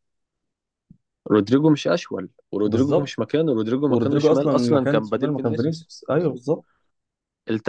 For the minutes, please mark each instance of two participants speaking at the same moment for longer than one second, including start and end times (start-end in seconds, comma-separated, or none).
3.9-6.4